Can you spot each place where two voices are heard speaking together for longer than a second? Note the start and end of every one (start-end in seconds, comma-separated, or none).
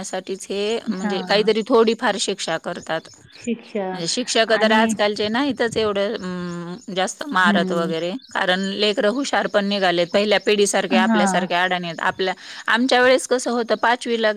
none